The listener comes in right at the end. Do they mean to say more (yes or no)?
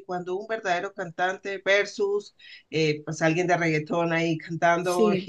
no